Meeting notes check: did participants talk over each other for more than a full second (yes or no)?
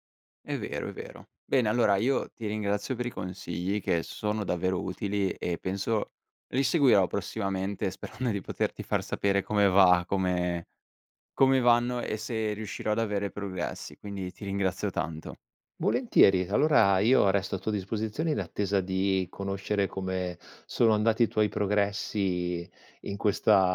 no